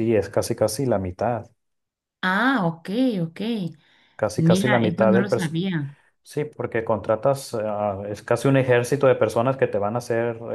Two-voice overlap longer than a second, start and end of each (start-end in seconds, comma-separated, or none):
4.3-5.6